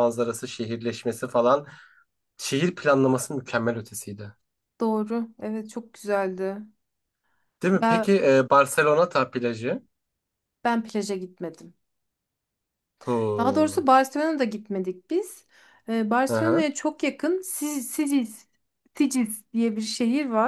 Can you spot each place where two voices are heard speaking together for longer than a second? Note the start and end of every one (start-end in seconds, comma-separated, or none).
none